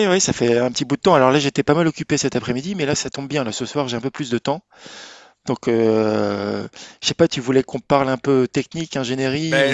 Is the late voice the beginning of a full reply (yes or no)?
yes